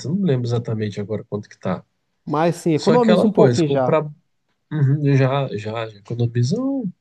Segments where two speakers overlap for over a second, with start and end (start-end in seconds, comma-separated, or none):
2.7-4.0